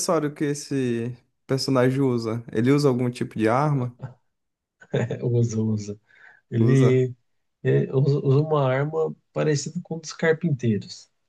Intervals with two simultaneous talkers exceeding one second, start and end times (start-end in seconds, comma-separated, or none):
none